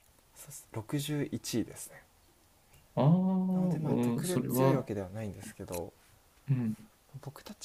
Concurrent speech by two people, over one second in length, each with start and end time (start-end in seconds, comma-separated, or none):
3.5-4.9